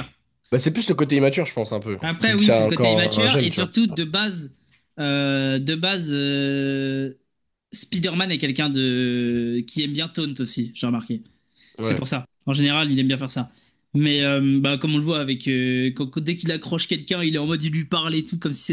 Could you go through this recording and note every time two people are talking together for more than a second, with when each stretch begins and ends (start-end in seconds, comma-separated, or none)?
2.0-3.7